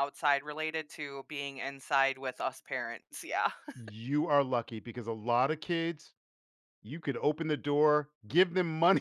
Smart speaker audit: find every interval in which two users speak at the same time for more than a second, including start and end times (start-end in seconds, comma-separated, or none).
none